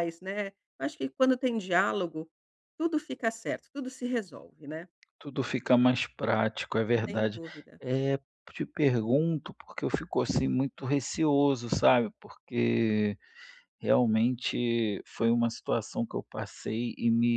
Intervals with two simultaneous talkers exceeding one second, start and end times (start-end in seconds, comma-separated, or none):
none